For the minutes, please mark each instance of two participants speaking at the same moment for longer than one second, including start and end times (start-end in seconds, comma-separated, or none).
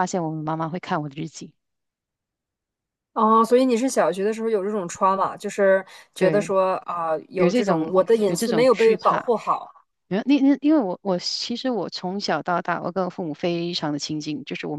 7.3-9.3